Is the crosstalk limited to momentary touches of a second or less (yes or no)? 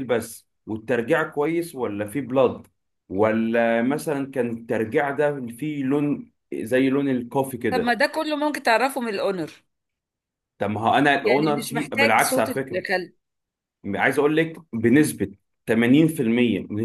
no